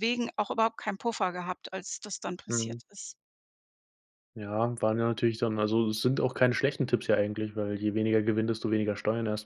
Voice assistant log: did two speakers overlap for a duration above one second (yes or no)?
no